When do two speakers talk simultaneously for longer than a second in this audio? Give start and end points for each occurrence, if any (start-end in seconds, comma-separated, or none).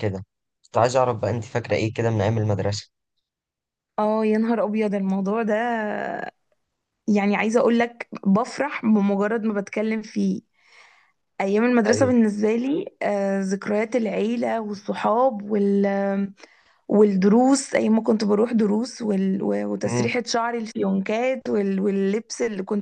none